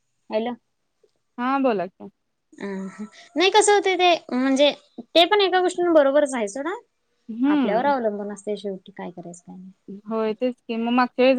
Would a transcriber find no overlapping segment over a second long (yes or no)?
yes